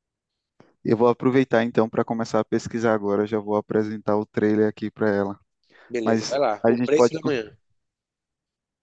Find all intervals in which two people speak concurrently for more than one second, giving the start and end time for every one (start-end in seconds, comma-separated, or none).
6.0-7.3